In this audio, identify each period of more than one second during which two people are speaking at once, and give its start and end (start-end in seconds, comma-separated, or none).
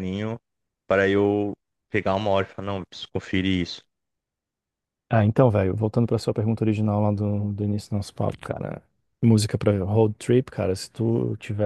none